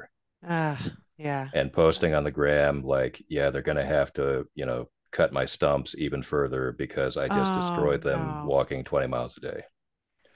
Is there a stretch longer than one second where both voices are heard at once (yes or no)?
yes